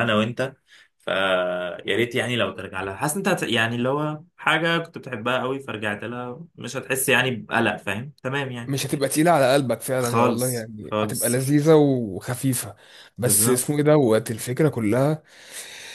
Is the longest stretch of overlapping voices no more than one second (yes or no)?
no